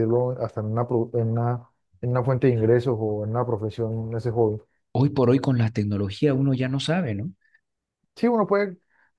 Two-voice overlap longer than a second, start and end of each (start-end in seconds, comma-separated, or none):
none